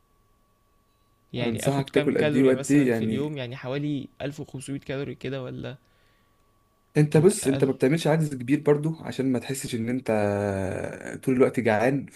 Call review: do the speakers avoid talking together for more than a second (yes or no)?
no